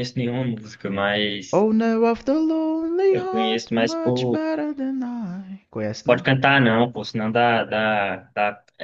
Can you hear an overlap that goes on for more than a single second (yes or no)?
yes